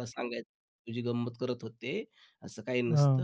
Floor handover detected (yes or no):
no